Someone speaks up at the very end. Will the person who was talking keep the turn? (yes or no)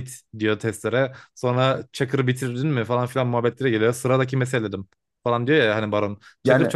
yes